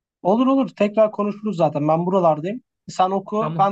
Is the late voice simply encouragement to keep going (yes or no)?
yes